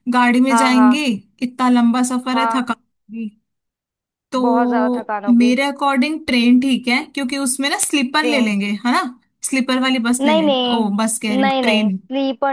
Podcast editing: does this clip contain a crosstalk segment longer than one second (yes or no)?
yes